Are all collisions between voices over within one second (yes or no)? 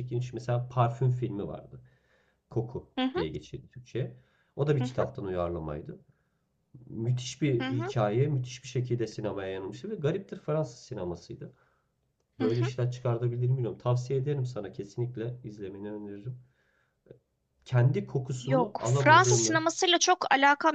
no